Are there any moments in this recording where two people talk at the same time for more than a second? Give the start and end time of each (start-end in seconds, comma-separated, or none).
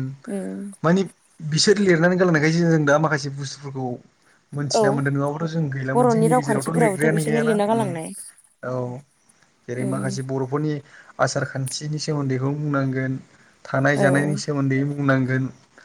5.9-7.9